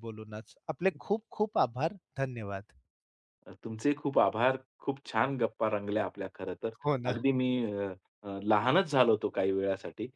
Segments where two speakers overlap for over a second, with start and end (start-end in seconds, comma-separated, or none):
none